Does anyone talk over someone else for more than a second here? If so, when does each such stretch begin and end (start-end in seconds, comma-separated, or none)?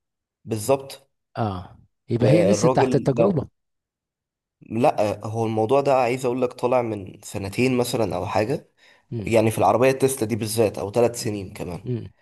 2.2-3.4